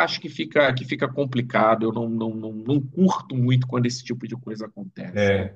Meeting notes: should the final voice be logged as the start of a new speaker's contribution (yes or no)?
yes